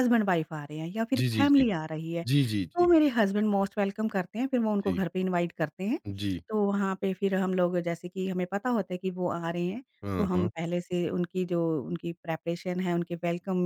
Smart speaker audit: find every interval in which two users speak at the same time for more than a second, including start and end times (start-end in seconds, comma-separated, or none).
none